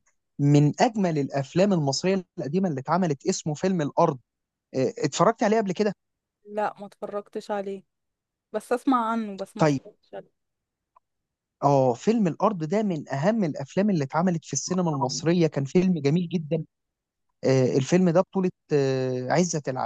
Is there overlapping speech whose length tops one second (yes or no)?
no